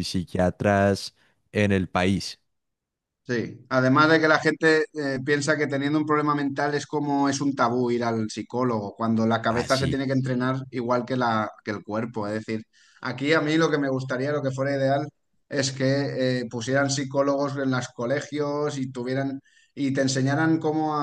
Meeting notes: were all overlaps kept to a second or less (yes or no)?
yes